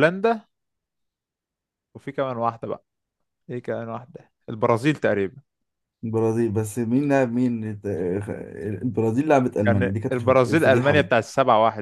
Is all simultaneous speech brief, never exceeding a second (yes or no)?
no